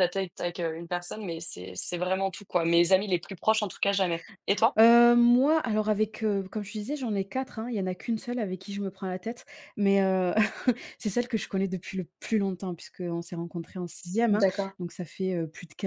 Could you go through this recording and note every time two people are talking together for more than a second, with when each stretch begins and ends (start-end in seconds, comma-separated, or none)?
none